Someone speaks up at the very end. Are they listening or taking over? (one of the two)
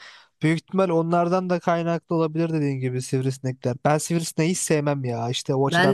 taking over